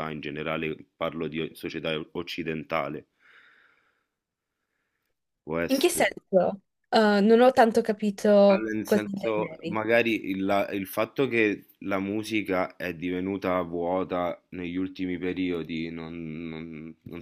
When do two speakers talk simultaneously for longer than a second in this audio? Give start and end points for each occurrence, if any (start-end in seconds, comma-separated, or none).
8.5-9.8